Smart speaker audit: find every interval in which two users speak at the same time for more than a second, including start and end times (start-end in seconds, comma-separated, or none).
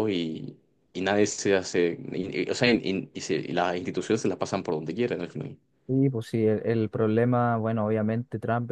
none